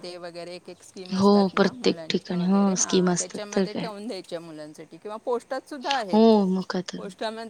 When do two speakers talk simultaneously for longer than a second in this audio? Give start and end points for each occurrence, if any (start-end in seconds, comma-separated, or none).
1.1-3.8